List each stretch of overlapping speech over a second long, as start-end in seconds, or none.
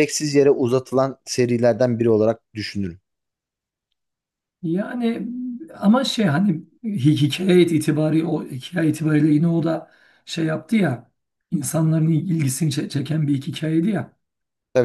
none